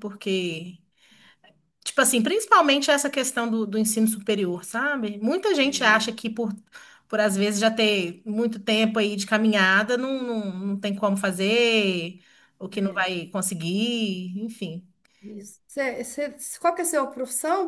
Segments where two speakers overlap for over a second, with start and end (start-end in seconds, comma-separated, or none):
none